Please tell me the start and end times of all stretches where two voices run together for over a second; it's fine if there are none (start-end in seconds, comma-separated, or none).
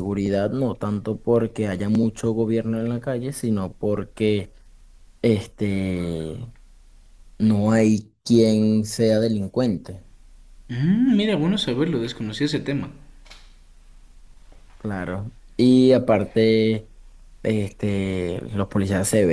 none